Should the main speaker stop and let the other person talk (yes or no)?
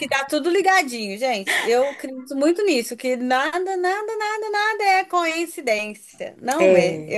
no